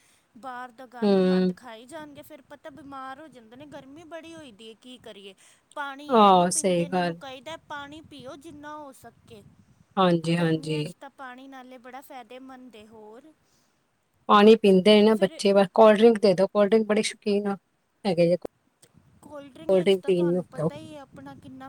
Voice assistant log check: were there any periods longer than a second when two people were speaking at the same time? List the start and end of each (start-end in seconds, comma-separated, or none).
none